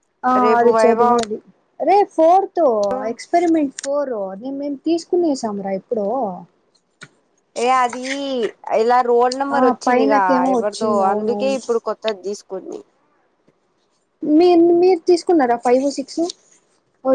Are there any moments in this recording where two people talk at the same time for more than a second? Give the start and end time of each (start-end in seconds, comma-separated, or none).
9.6-11.6